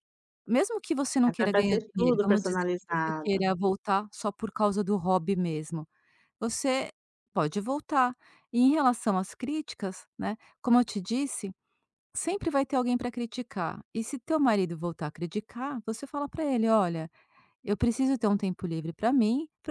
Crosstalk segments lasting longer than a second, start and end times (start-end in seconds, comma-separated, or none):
1.2-3.4